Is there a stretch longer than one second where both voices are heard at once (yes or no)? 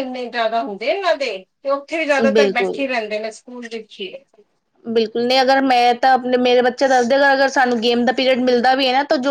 no